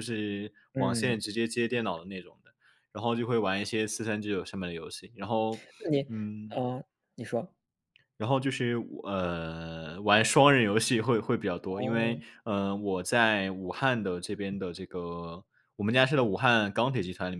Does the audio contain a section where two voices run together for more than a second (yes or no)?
no